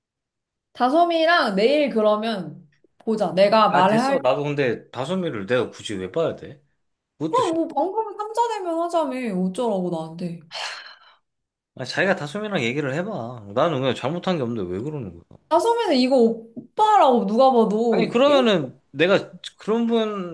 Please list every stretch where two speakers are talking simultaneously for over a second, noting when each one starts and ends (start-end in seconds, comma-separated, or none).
none